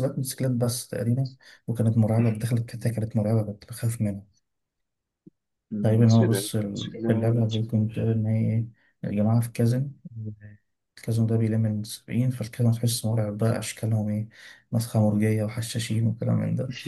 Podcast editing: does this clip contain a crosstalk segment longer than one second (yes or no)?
yes